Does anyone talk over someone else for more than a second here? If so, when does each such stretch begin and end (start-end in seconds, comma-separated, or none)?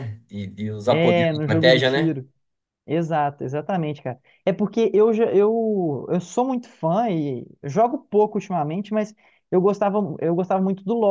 0.9-2.2